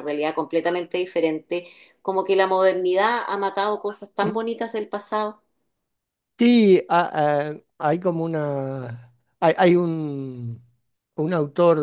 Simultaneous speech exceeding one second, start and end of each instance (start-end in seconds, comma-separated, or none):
none